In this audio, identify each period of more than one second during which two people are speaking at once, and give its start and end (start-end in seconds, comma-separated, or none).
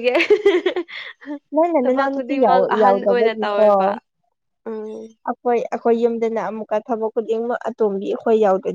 1.8-3.7